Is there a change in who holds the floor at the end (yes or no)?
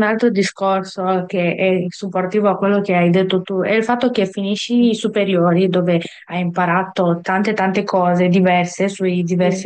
no